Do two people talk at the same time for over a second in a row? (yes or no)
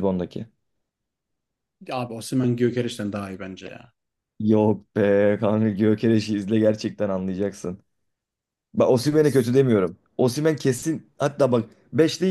no